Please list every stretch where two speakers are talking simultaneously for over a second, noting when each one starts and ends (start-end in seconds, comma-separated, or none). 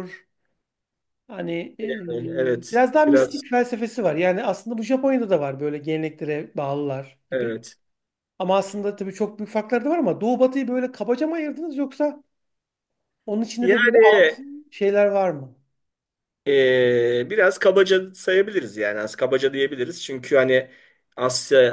1.8-3.4